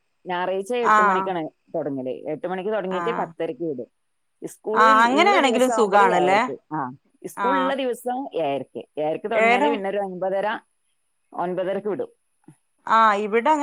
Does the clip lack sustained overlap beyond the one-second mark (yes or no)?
no